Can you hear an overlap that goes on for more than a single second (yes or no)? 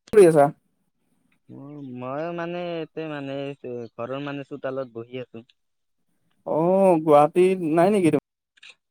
no